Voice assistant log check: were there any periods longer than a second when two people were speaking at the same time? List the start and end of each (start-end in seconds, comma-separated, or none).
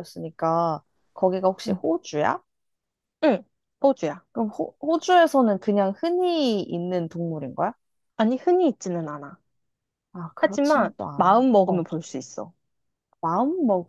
10.4-11.9